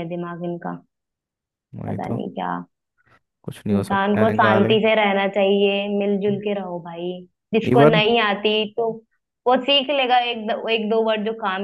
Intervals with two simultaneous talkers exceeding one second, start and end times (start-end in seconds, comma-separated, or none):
3.7-4.9